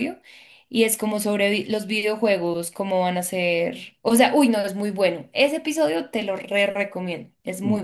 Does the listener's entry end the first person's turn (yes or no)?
yes